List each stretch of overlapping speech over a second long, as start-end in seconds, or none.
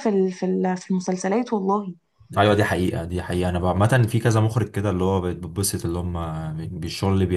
none